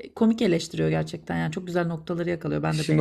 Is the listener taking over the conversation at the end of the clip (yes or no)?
yes